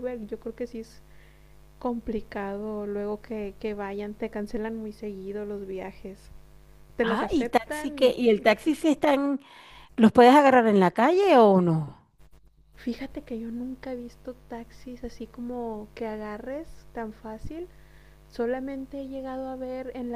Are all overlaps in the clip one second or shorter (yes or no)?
no